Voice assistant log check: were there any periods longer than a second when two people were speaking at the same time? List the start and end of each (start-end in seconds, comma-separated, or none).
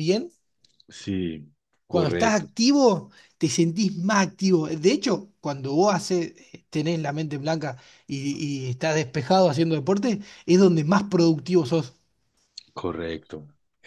none